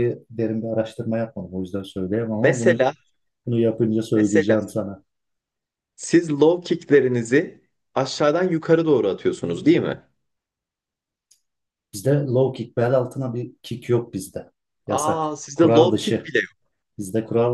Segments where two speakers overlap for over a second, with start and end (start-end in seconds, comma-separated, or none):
14.9-16.3